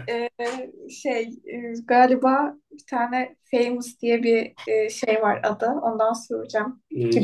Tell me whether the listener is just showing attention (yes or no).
no